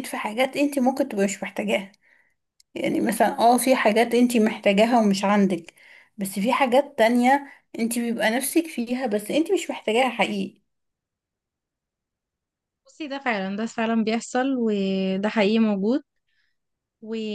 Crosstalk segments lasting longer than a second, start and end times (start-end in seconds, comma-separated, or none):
none